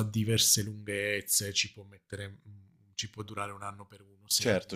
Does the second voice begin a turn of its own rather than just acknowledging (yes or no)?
yes